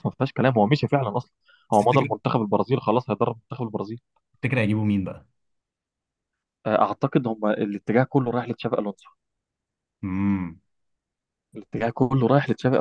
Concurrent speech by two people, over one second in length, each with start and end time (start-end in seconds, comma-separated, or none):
none